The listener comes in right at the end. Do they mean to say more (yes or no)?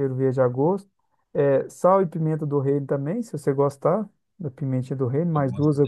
no